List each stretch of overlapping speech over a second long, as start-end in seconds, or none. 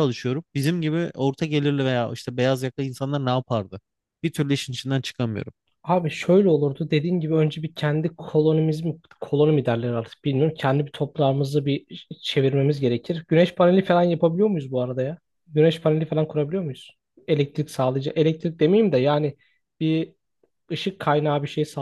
none